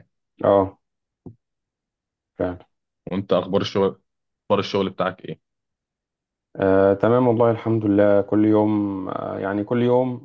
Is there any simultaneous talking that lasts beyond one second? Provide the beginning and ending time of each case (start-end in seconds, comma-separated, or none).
none